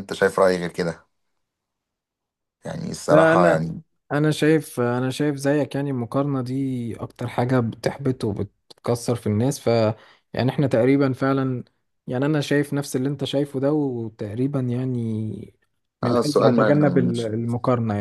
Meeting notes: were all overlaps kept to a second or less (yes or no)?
no